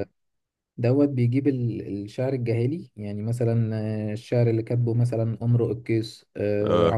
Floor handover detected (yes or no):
no